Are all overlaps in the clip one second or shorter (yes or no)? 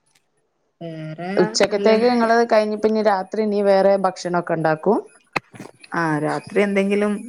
yes